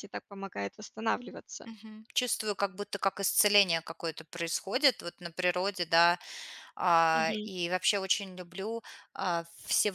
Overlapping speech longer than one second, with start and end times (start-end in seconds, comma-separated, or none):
none